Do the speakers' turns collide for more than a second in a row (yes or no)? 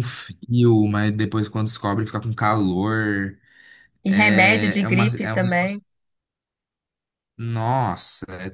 yes